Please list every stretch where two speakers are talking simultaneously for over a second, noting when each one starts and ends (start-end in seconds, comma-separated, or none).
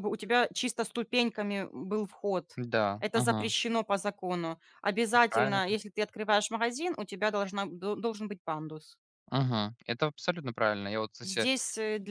none